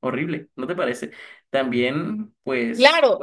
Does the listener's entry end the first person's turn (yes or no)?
yes